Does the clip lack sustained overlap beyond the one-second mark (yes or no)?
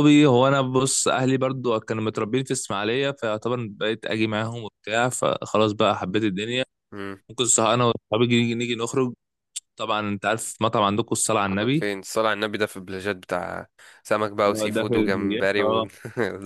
no